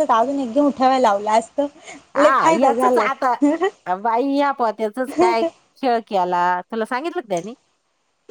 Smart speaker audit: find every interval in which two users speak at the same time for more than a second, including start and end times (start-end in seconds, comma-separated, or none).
none